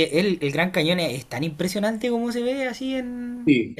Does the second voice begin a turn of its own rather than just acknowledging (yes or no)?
yes